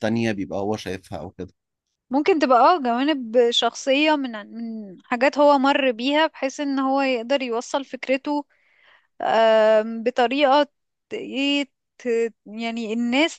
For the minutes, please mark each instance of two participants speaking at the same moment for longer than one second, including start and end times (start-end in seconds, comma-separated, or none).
none